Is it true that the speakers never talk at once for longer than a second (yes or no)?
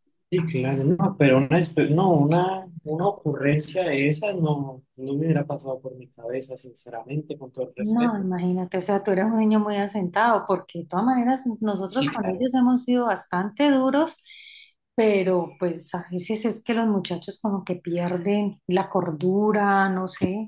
yes